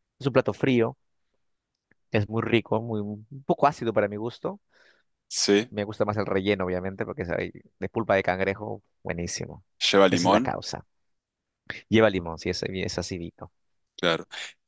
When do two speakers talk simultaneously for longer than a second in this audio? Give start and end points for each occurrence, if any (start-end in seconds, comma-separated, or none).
none